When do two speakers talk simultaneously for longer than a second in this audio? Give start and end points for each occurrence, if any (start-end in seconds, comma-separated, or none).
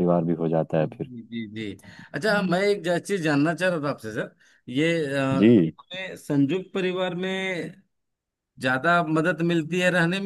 none